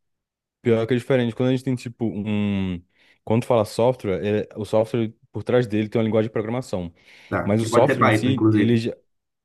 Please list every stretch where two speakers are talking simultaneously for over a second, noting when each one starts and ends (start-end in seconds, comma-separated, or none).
7.4-8.8